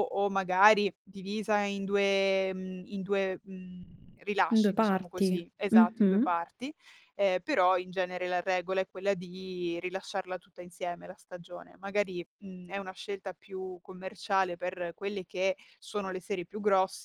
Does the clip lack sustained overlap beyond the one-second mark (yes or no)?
no